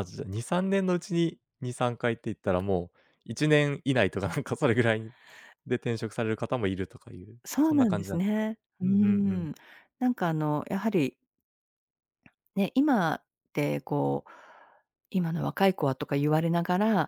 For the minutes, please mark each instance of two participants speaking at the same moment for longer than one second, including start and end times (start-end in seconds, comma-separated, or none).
7.5-9.4